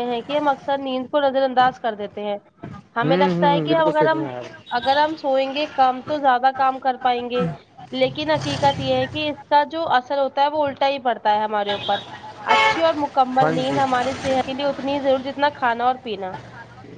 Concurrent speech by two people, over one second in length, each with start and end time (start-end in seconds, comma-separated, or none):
3.0-4.3